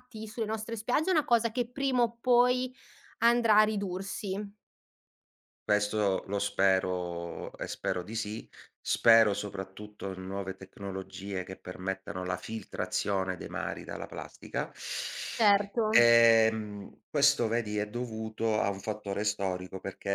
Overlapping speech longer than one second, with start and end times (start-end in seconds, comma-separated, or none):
none